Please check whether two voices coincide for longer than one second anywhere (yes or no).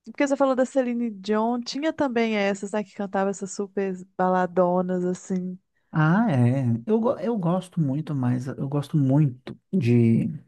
no